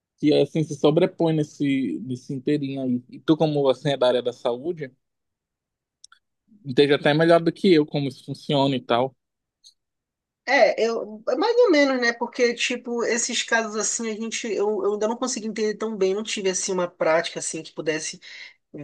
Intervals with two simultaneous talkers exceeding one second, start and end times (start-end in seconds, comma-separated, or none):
none